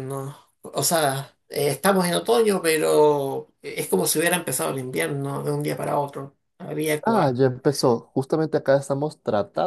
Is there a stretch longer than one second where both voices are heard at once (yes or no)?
no